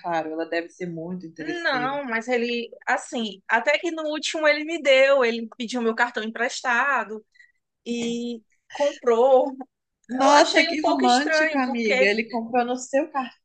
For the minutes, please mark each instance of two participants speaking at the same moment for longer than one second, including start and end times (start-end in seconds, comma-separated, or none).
10.2-12.1